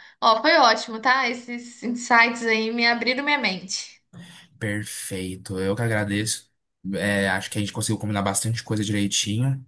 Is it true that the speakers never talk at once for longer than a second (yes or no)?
yes